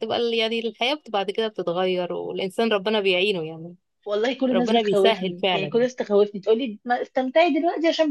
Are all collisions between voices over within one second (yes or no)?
no